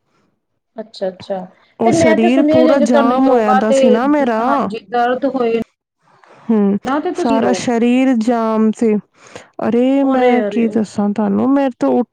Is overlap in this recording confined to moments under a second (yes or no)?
no